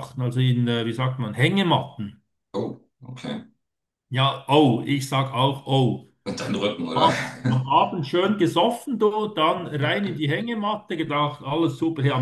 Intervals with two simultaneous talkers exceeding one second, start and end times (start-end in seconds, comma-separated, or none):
none